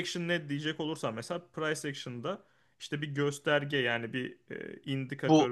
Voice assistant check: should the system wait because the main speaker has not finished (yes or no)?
yes